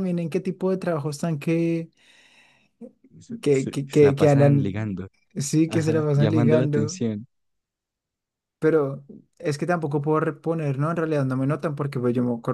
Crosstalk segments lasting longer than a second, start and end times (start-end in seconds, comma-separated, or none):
3.4-5.0, 5.7-7.0